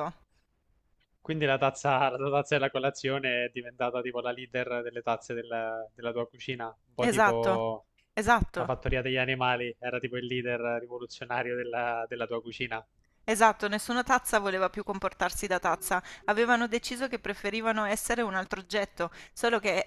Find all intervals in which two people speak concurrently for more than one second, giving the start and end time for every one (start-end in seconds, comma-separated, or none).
none